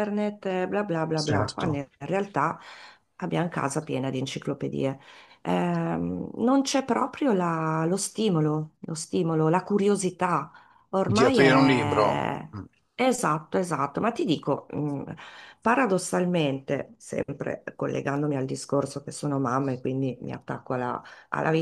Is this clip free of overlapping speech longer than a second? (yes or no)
no